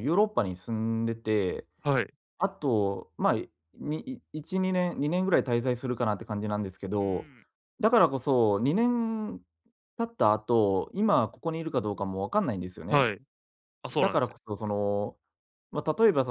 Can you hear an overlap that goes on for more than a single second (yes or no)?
no